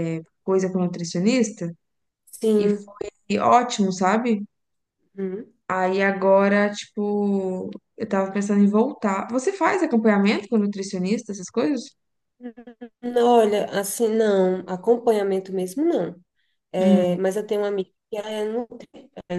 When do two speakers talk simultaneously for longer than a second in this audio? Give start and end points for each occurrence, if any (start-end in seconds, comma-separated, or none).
none